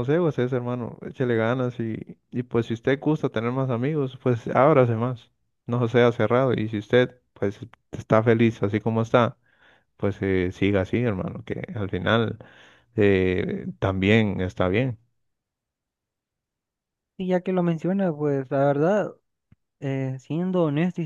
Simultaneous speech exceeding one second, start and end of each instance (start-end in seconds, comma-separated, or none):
none